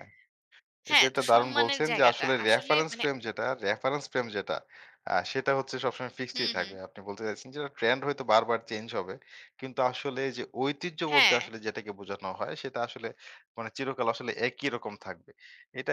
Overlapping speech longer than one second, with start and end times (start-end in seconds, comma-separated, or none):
0.9-3.0